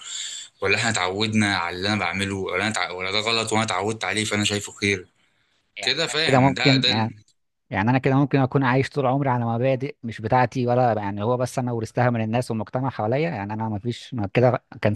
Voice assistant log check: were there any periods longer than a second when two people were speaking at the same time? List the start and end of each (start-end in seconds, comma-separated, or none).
5.8-7.1